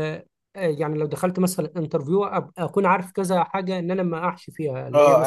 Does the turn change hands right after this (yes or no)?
yes